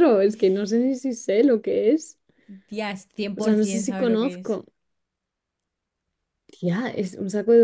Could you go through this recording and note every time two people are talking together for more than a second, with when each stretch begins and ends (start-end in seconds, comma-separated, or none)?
3.4-4.6